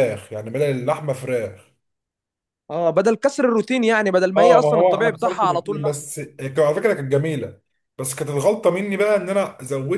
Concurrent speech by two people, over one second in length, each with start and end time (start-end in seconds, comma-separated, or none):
4.4-6.1